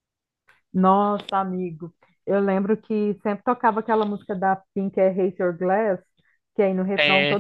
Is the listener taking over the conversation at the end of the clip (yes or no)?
no